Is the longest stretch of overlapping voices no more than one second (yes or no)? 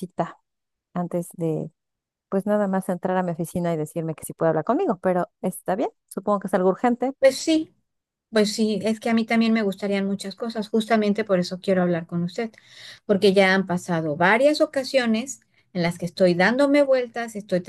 yes